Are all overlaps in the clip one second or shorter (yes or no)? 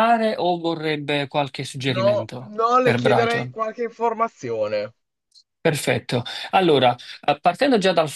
no